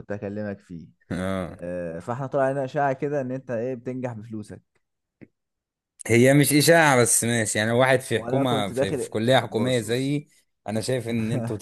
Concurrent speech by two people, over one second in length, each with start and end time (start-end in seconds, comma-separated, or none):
8.2-10.2